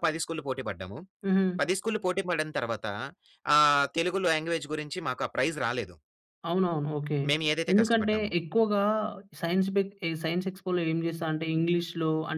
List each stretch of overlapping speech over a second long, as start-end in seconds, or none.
none